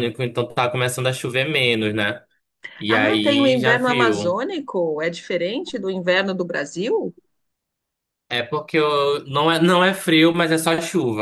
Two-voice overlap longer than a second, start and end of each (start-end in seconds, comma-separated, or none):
2.9-4.4